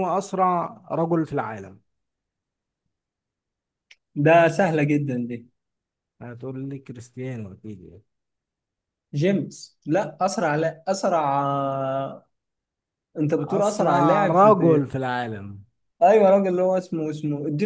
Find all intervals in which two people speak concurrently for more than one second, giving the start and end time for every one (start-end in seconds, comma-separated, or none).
13.4-14.9